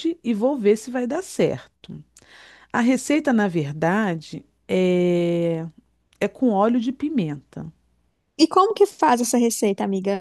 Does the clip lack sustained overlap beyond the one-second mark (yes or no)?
yes